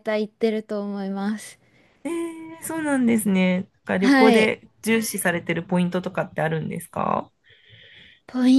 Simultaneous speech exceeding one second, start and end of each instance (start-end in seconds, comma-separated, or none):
none